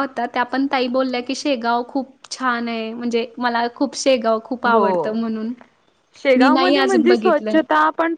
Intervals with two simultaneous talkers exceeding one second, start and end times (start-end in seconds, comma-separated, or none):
6.4-7.6